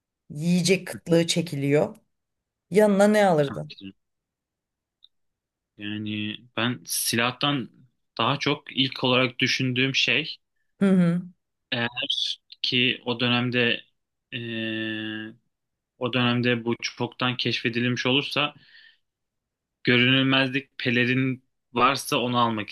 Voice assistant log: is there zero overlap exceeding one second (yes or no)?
yes